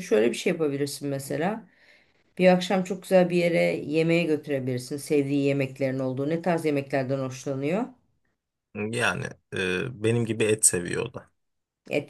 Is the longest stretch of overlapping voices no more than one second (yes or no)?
yes